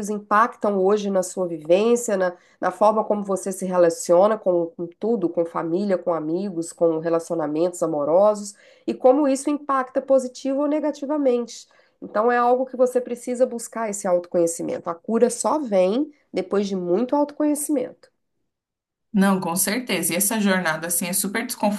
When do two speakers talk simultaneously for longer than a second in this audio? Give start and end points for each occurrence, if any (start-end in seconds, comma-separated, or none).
none